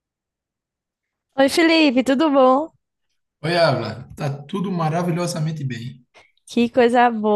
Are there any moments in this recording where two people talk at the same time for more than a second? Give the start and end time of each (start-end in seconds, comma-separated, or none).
none